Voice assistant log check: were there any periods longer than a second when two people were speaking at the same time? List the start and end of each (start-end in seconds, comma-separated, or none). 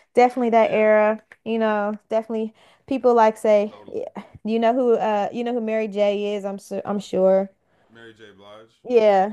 none